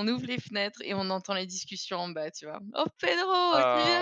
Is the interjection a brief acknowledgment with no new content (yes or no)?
yes